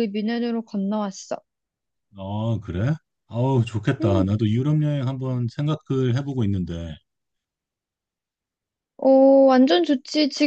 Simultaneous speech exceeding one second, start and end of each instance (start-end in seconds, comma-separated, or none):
none